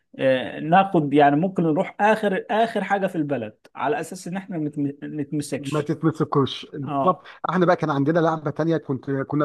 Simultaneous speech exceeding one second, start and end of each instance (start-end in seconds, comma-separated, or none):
none